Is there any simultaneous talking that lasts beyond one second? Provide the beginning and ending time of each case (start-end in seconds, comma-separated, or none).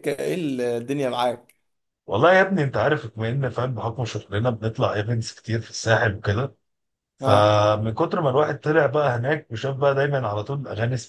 none